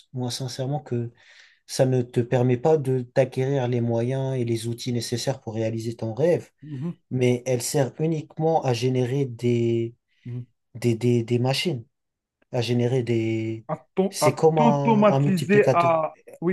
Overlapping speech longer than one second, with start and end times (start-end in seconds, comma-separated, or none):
14.1-16.0